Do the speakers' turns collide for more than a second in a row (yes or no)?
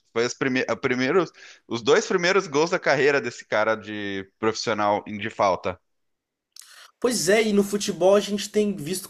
no